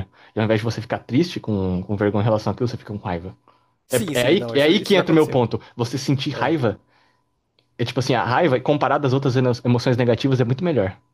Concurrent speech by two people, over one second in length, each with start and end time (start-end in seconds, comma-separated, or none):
3.9-5.4